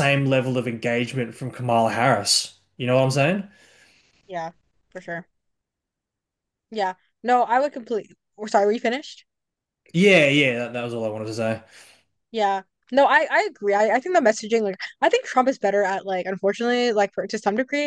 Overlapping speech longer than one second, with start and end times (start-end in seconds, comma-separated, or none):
none